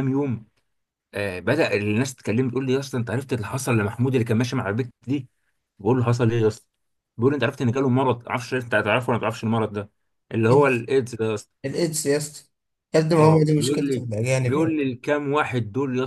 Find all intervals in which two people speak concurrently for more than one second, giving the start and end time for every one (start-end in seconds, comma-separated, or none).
13.2-14.8